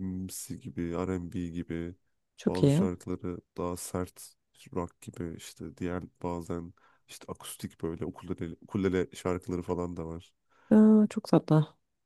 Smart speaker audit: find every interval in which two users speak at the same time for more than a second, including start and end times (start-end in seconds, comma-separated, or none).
none